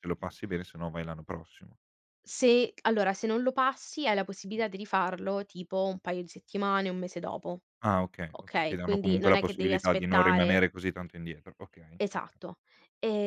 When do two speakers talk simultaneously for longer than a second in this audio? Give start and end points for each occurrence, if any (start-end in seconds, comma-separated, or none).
8.3-10.7